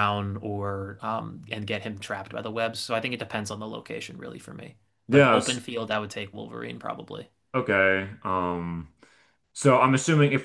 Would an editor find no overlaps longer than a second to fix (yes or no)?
yes